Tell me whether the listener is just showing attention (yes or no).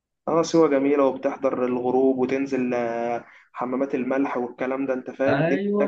no